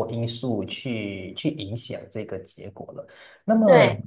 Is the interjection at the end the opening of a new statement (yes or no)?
no